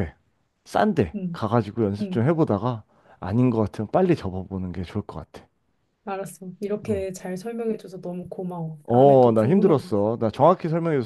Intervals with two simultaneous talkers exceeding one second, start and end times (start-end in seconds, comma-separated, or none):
8.8-10.1